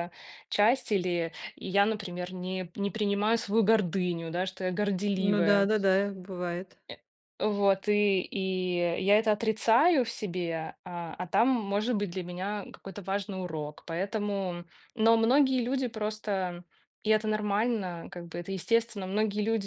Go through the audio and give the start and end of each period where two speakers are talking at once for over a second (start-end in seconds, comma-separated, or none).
none